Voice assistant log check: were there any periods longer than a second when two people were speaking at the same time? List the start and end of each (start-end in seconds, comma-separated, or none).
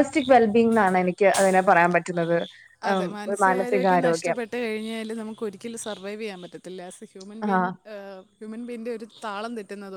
none